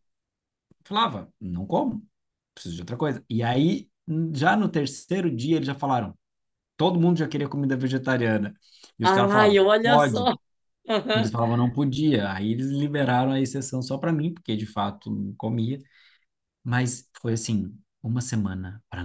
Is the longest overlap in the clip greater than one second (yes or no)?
yes